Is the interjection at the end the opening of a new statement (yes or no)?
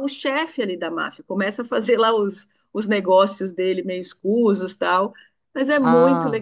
yes